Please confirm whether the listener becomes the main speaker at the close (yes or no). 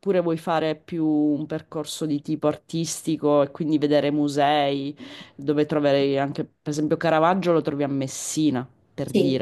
yes